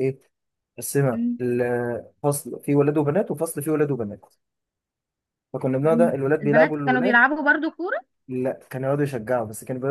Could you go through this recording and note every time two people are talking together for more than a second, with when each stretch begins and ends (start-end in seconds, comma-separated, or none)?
5.8-7.2